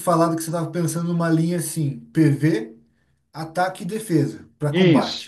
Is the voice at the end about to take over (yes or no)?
yes